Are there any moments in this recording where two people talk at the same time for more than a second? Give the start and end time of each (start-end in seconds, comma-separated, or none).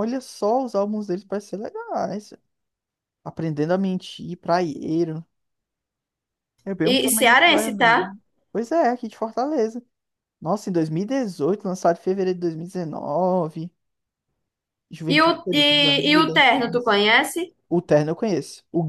6.8-8.1, 15.1-17.0